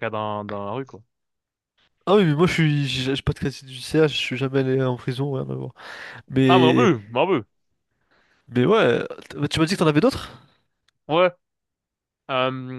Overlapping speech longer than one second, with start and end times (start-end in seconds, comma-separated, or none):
none